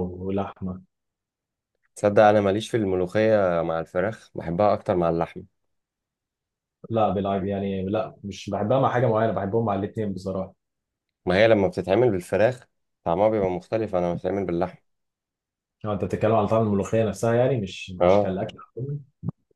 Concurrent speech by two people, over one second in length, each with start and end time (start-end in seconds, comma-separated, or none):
none